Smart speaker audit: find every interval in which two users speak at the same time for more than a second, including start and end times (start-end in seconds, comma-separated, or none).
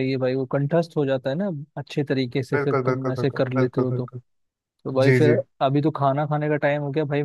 2.5-4.1